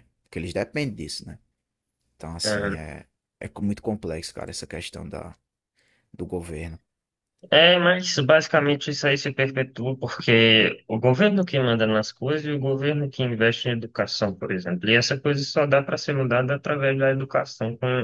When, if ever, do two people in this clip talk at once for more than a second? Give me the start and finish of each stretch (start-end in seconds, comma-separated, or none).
none